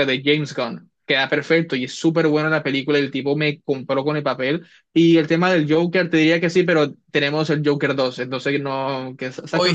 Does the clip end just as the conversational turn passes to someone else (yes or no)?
yes